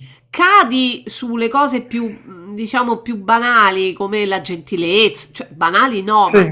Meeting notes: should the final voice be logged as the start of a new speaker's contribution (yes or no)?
no